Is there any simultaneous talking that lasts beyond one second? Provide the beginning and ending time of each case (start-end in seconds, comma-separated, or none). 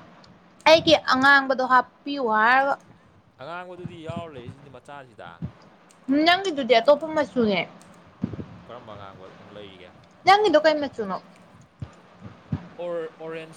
none